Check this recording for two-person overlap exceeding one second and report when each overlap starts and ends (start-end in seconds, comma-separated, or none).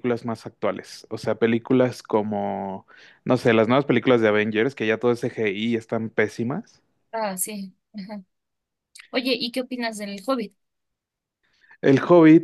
none